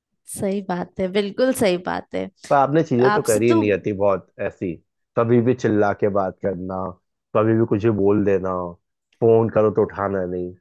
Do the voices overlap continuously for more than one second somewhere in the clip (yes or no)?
no